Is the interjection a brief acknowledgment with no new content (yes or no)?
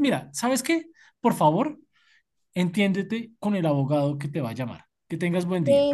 no